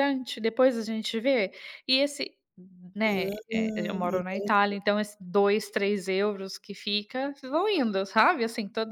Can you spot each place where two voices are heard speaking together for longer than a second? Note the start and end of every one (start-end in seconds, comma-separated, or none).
3.0-4.8